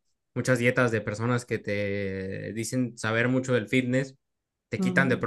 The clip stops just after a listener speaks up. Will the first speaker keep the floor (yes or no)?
yes